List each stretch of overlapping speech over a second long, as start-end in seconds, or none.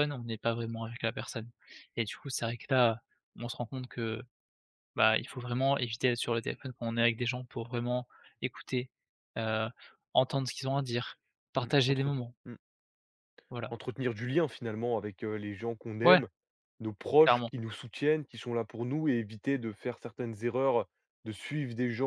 none